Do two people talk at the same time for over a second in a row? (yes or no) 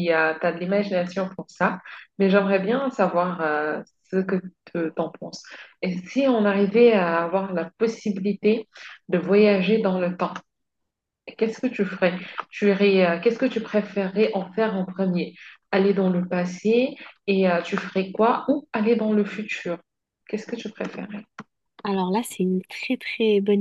no